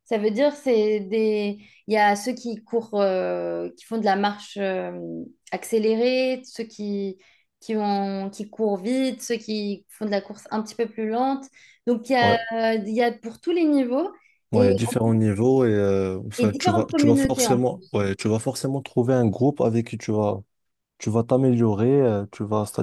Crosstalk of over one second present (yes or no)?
yes